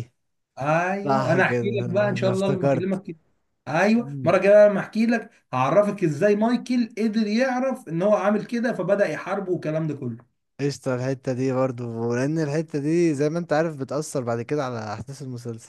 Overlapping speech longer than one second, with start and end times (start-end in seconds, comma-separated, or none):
1.0-3.0